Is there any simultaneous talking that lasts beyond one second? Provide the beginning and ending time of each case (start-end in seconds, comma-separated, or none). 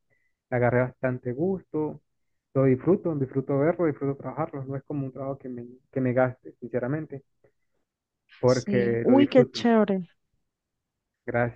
8.4-9.7